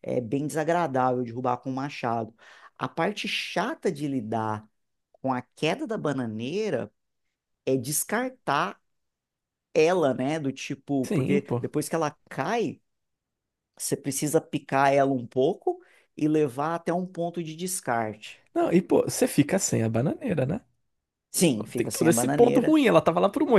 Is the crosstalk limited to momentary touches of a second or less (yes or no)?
no